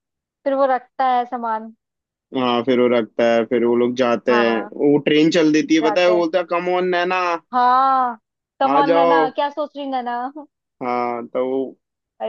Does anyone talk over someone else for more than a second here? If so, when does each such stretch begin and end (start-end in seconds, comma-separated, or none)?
none